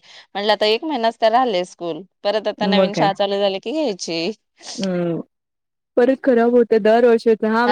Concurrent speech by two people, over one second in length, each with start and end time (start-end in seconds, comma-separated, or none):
none